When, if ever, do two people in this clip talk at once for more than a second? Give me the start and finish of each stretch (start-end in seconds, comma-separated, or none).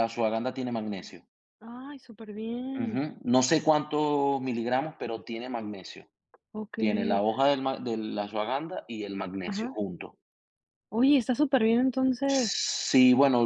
none